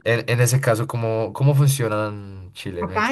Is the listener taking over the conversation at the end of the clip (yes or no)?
yes